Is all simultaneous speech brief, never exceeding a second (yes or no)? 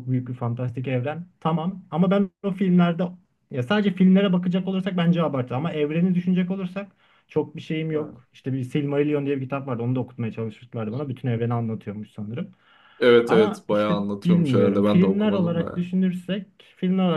no